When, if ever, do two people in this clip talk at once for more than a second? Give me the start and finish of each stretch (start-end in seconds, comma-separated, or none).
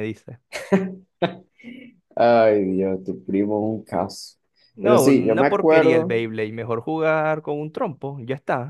4.8-6.1